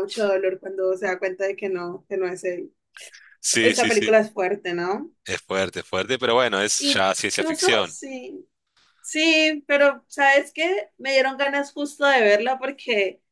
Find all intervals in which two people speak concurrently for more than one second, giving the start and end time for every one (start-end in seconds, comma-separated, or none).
6.8-8.0